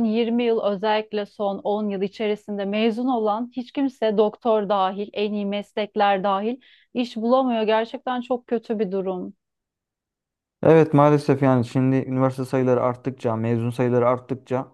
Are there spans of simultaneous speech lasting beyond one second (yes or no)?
no